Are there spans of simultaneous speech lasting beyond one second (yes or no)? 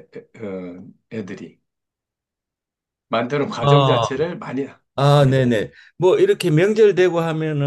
no